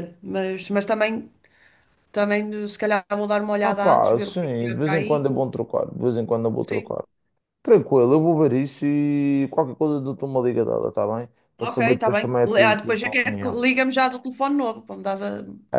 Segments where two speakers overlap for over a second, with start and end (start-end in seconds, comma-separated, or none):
3.6-5.3, 11.6-13.6